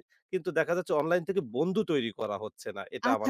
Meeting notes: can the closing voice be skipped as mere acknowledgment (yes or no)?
no